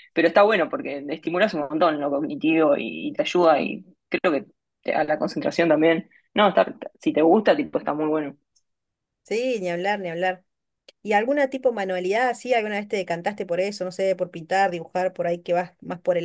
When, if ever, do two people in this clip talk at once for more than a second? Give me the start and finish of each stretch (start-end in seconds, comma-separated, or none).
none